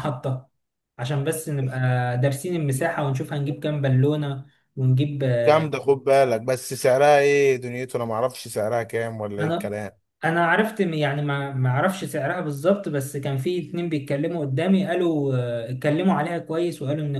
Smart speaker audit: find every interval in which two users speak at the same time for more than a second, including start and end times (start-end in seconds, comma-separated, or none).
none